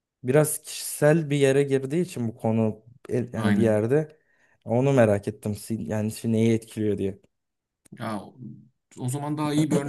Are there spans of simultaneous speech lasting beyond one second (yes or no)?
no